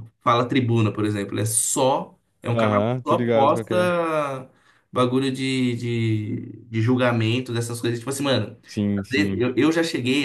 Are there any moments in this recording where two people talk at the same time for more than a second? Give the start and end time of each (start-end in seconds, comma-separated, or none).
2.5-3.8